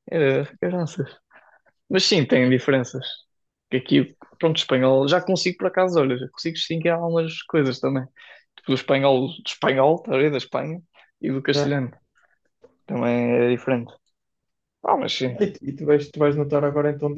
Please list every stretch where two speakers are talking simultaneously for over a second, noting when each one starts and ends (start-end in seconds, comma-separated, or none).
none